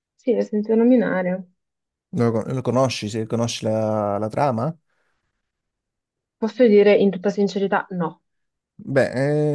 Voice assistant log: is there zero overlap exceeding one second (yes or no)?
yes